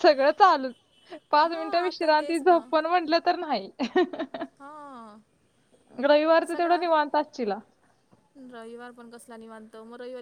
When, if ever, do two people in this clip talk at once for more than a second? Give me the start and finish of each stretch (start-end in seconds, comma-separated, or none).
1.4-2.7